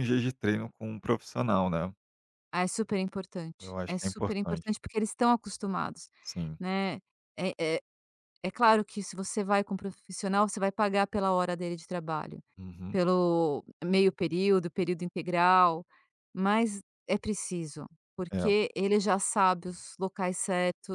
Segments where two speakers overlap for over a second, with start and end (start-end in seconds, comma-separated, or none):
3.6-4.8